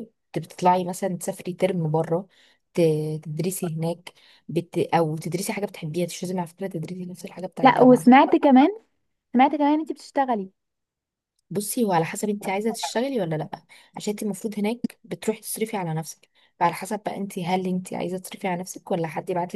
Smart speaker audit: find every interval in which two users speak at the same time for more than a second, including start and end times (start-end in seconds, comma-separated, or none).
none